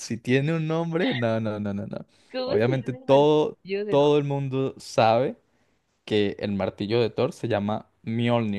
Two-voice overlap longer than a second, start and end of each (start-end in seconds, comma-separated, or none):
2.5-4.0